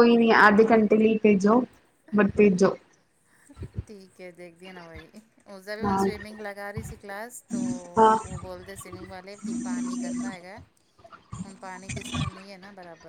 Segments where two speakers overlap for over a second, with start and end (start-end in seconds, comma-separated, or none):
none